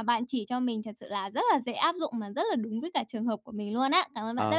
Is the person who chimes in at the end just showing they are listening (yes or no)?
no